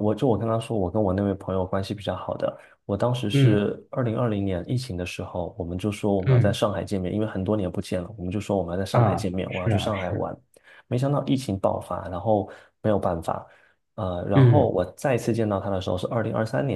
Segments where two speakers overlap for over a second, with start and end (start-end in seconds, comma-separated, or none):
8.9-10.3